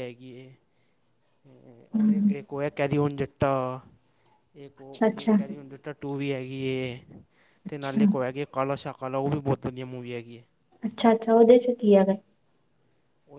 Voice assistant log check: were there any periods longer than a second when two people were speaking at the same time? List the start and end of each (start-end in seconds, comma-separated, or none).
none